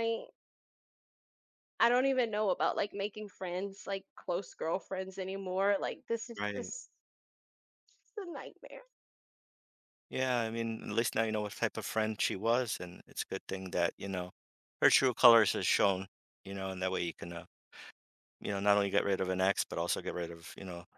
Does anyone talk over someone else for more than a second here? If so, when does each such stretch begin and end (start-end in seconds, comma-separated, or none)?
none